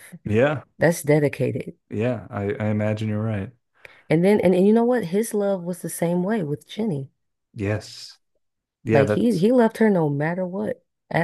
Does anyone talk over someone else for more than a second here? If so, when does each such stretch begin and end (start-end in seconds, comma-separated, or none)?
none